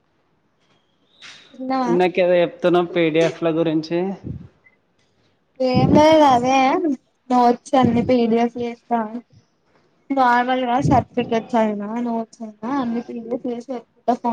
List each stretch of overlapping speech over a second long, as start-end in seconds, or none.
none